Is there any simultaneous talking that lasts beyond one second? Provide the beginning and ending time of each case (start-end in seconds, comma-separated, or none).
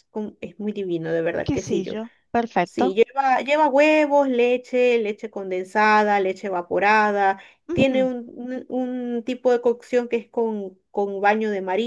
none